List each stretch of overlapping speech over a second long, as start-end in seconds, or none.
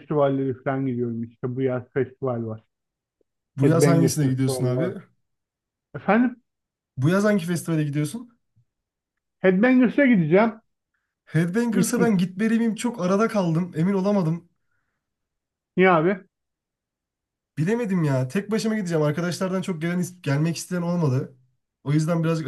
3.6-4.9